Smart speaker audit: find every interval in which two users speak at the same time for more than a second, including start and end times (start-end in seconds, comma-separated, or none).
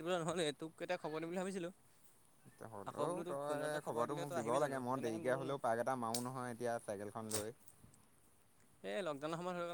2.9-5.5